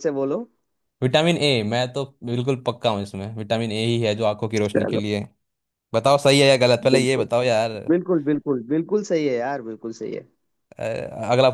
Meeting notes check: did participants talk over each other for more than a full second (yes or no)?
no